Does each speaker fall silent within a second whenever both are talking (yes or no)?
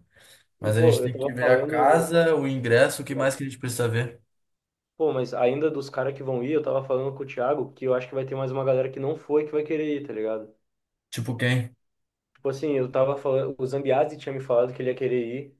no